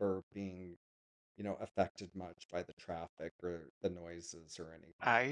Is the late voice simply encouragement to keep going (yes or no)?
no